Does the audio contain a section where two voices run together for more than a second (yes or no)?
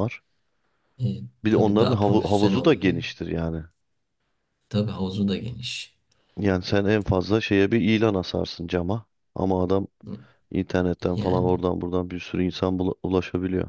yes